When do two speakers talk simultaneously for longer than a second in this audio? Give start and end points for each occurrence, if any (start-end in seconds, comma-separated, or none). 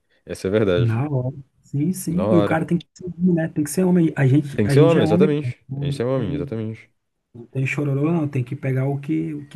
4.5-6.6